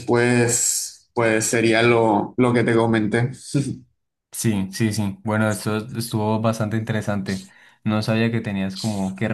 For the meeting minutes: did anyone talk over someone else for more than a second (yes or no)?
no